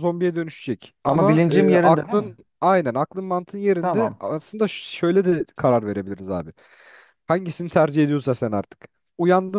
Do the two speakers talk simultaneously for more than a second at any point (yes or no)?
yes